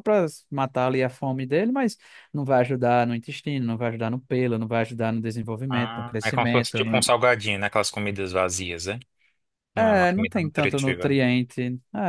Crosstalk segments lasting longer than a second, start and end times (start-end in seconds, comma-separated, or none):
5.7-6.9, 9.8-11.2